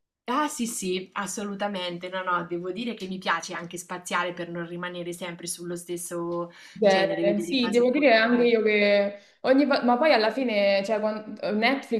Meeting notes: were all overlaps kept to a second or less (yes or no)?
no